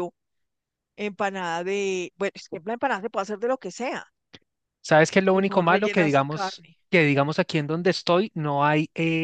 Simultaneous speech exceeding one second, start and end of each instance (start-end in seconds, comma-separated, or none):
5.3-6.8